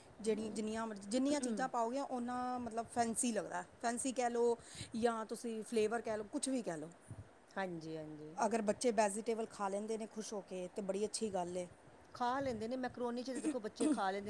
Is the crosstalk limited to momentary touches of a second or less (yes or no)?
yes